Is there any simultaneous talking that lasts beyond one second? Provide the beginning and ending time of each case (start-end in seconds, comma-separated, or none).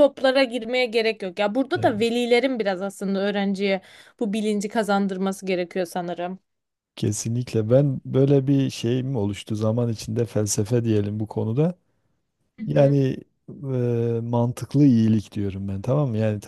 none